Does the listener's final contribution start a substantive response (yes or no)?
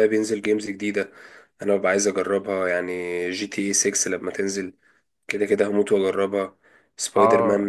yes